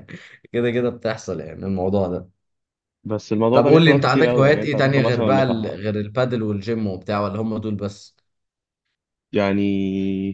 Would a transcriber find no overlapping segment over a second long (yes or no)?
no